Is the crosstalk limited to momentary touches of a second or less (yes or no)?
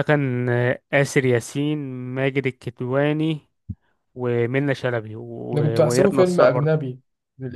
no